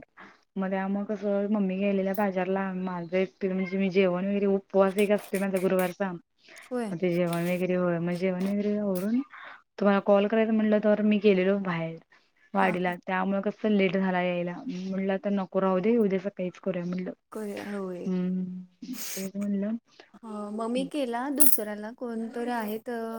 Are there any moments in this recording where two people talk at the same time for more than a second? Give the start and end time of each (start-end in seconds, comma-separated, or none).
none